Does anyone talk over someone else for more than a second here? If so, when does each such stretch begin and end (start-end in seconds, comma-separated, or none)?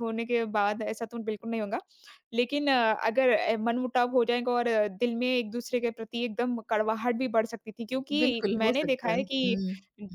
8.2-9.6